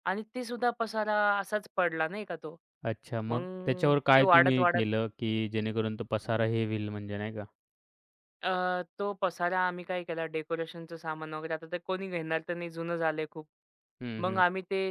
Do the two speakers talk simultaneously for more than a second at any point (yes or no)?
yes